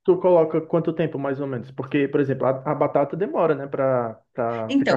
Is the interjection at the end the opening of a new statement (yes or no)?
yes